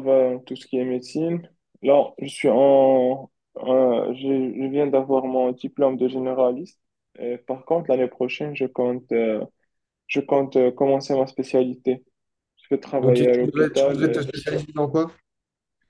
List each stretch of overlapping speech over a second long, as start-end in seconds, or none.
13.0-14.2